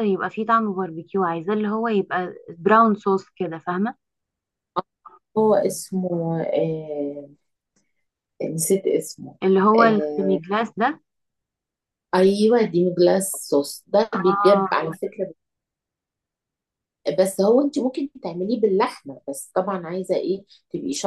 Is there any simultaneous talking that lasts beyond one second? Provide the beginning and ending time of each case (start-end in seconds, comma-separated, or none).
none